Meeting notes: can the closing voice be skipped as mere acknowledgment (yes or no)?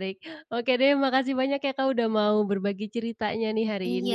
no